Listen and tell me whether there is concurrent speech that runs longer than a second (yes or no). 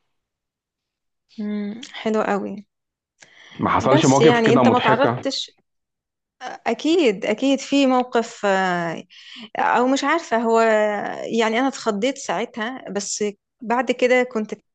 yes